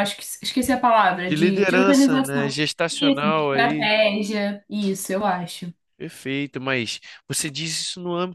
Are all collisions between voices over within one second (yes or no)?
no